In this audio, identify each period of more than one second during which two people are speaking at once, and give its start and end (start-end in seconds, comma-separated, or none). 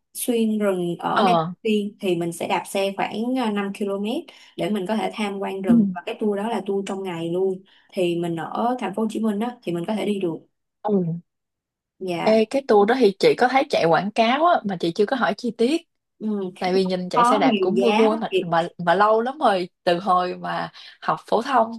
17.1-18.6